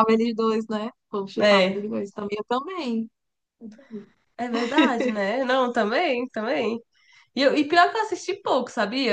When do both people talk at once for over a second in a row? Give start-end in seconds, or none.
none